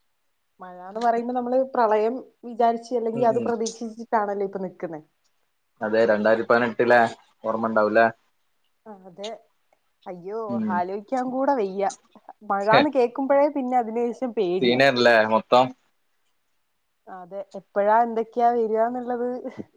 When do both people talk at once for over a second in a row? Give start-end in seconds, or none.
none